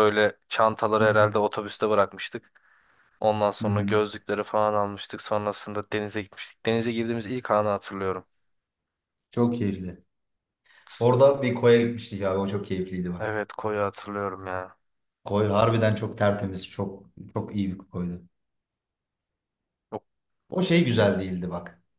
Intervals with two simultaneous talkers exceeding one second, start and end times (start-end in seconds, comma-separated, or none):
none